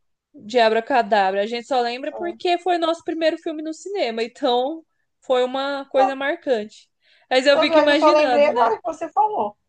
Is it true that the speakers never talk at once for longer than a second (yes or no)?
no